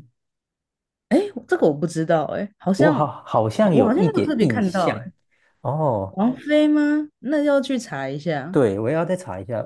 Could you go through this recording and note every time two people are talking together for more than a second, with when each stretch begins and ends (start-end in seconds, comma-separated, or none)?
3.6-5.0